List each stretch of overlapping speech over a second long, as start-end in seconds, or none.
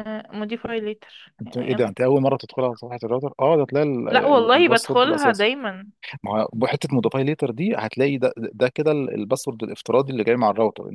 4.1-5.5